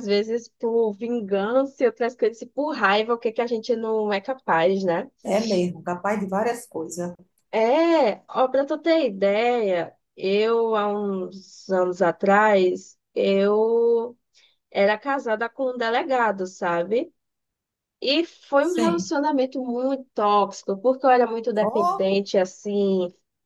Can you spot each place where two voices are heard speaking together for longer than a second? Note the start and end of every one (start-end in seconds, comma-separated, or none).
none